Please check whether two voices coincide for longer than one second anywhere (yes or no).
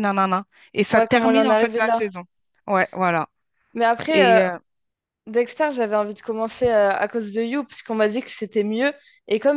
yes